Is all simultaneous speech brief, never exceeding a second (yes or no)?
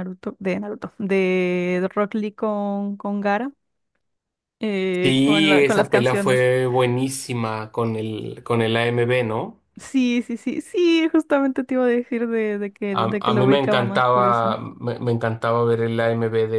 no